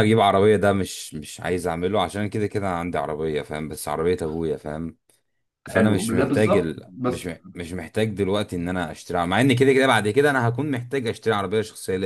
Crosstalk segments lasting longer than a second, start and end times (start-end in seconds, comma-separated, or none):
5.7-7.3